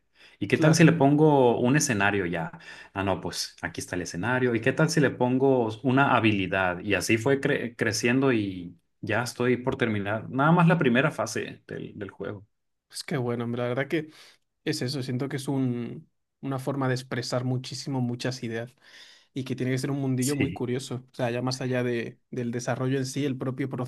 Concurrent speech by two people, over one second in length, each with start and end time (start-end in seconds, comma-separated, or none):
none